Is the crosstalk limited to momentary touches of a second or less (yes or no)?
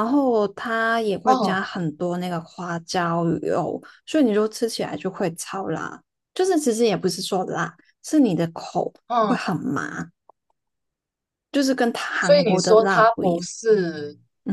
no